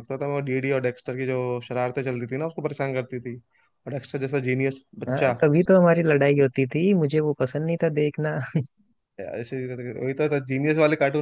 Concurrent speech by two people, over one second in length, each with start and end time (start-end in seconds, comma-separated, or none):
none